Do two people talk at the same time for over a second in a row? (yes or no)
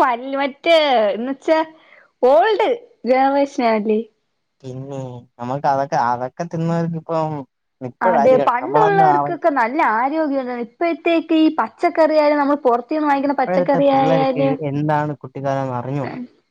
no